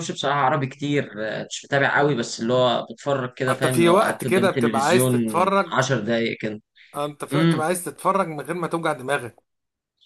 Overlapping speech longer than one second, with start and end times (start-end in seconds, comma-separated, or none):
3.5-5.7